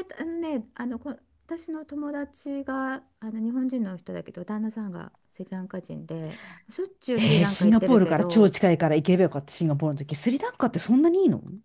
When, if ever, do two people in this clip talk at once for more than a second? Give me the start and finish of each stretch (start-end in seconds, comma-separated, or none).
7.1-8.5